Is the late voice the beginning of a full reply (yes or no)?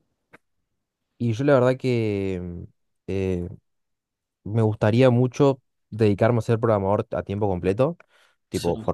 no